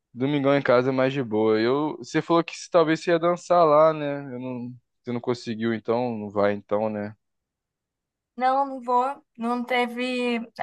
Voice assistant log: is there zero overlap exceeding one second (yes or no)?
yes